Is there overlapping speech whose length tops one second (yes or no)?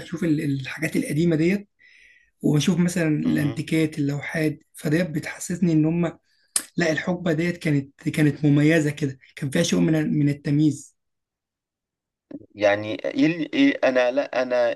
no